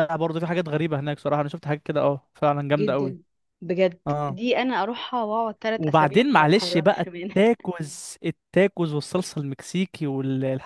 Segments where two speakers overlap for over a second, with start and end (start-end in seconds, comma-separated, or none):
5.8-7.4